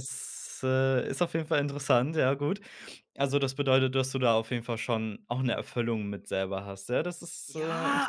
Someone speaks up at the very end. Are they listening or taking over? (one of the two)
taking over